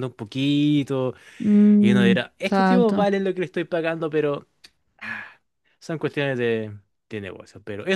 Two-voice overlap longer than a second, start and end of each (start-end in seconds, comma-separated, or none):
1.8-3.1